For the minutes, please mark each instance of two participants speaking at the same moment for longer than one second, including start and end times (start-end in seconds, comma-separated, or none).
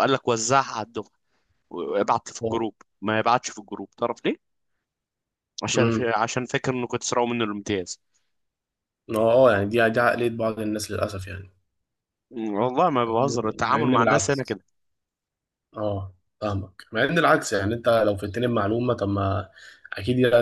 13.0-14.6